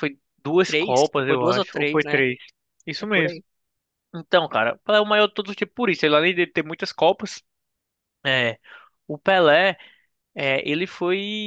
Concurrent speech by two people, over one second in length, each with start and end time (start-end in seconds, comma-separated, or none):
0.6-2.2